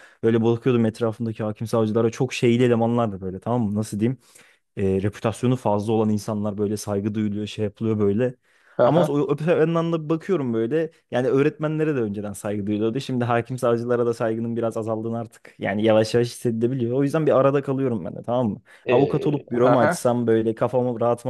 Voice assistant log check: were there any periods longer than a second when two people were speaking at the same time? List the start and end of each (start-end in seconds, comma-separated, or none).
18.8-20.1